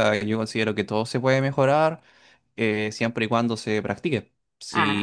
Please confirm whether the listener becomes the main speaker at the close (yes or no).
no